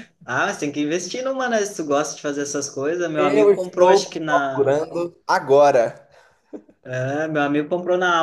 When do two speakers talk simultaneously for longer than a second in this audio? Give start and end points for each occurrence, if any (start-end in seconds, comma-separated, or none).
3.2-4.7